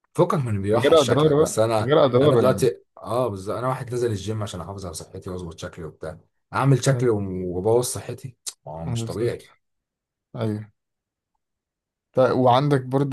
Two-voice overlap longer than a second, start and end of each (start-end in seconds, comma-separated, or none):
0.7-2.7